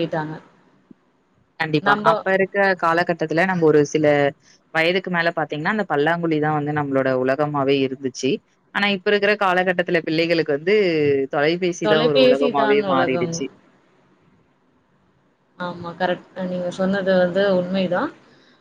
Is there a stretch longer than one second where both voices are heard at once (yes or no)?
yes